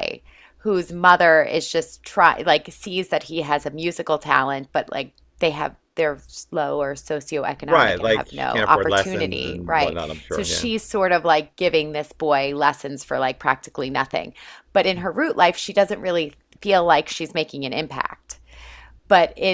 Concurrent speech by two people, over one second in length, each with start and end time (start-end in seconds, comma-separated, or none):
7.7-10.7